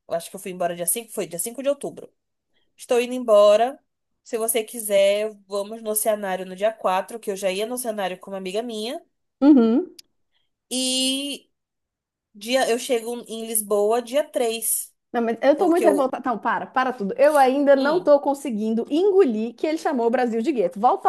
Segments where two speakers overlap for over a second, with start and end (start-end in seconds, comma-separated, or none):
none